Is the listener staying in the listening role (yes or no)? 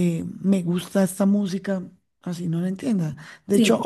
yes